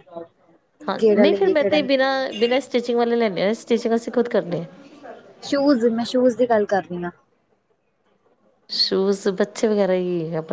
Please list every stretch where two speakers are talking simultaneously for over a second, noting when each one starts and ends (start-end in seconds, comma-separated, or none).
1.0-2.5